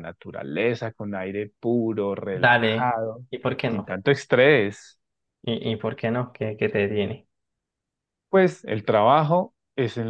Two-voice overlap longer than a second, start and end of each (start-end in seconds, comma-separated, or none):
none